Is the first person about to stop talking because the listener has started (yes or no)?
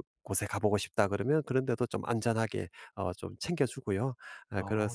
no